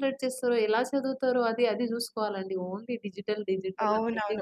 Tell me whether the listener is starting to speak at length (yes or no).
yes